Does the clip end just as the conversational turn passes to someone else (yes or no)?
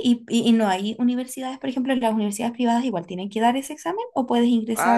yes